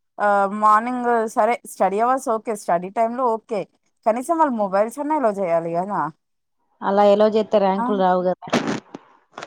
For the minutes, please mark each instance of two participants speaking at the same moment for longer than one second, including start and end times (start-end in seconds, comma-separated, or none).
none